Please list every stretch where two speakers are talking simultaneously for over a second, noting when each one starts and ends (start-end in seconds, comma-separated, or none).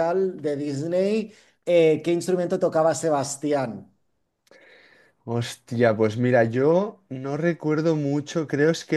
none